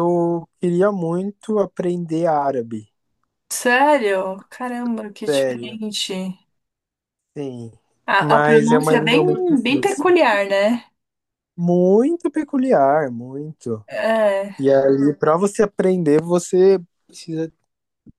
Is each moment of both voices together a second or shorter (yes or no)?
no